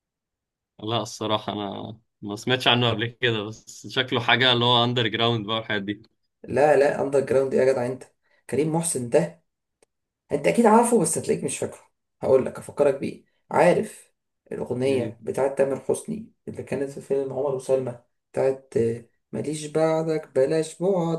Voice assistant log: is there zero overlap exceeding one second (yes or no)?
yes